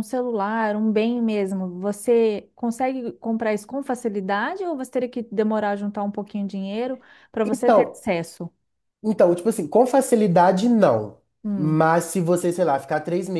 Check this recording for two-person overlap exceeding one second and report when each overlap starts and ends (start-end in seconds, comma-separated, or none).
none